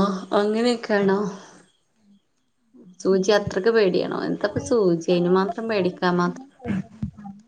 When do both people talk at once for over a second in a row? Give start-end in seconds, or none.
4.4-6.1